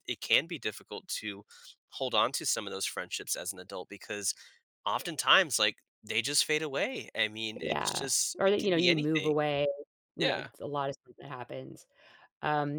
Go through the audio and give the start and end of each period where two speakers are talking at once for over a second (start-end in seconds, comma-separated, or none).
7.6-9.3